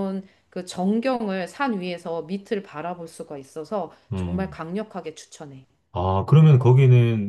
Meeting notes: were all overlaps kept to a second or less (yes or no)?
yes